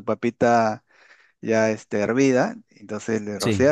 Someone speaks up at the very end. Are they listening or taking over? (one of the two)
listening